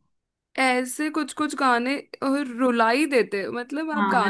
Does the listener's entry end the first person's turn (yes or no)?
yes